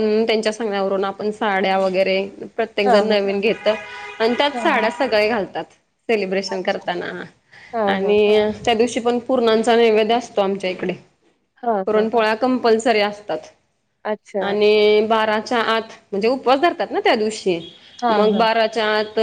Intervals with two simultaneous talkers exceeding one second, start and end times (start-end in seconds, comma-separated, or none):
none